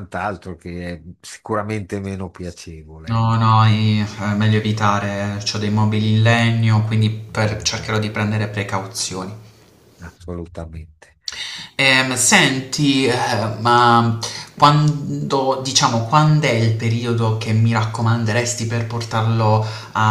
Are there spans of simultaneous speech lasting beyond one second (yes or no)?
no